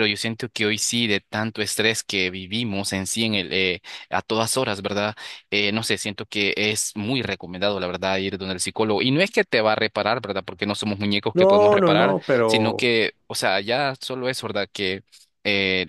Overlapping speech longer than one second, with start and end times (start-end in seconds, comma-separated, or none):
11.3-12.9